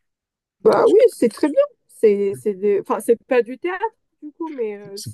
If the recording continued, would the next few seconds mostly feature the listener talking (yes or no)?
yes